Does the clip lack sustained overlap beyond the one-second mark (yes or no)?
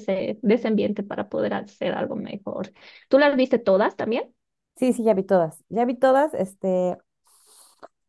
yes